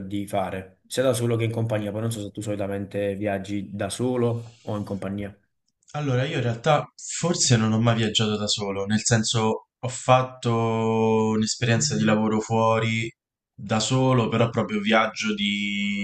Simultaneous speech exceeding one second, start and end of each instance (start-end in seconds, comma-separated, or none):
none